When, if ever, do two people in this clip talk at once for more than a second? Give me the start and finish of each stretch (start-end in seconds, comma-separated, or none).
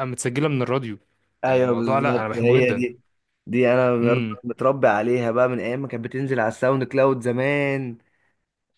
1.5-2.8